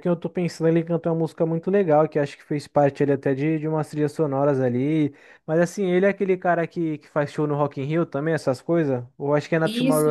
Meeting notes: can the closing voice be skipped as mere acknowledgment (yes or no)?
no